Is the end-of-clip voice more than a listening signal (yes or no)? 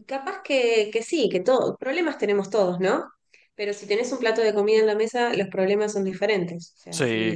no